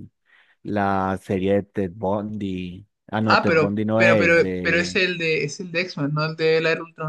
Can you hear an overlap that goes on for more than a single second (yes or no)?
yes